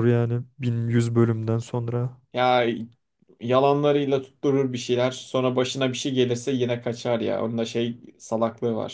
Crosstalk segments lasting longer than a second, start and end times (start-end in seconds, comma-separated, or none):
none